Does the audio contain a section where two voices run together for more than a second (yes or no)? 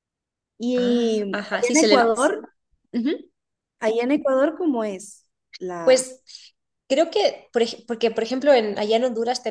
yes